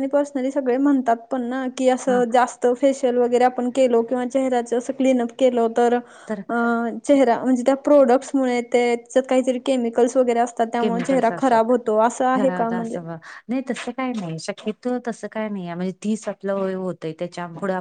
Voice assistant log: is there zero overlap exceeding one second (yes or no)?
yes